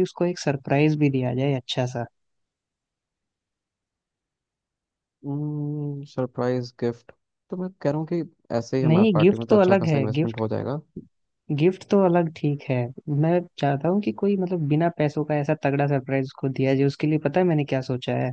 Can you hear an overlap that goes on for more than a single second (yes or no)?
yes